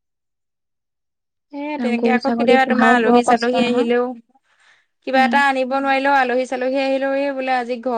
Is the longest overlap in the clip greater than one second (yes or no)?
yes